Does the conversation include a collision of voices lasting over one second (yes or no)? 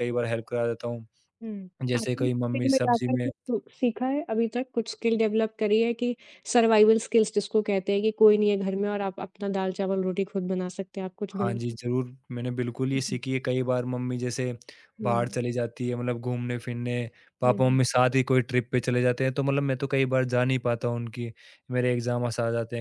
yes